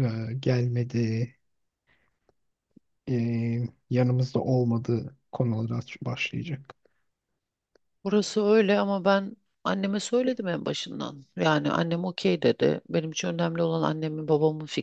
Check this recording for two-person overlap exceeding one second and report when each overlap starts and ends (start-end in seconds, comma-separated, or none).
none